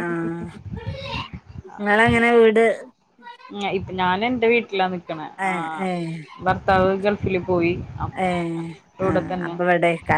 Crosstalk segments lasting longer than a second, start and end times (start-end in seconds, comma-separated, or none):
none